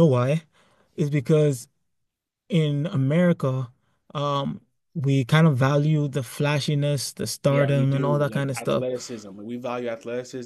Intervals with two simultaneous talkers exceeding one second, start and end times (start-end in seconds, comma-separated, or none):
7.5-8.8